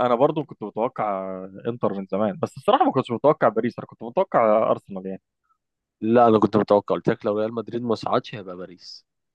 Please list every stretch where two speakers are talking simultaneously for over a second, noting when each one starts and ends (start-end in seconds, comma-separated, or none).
none